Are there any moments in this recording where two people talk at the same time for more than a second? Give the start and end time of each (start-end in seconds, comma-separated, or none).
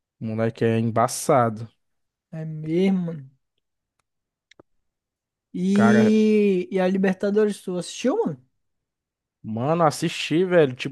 none